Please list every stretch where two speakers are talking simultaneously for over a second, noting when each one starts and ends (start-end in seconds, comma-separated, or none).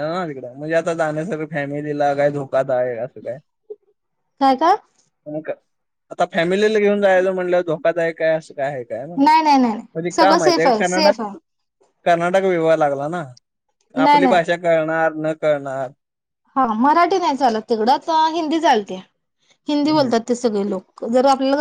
9.2-11.2